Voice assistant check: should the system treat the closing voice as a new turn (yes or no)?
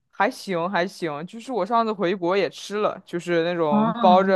no